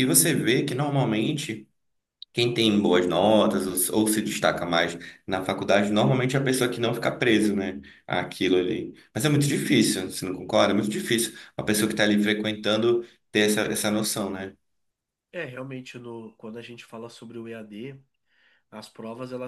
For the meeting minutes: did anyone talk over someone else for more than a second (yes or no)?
no